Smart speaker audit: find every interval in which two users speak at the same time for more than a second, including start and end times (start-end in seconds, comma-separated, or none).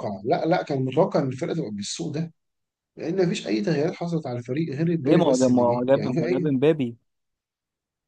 5.0-6.5